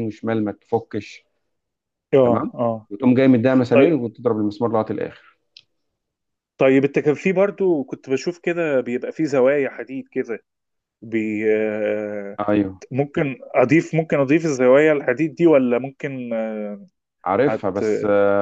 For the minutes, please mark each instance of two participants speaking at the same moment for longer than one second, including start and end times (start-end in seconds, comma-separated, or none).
none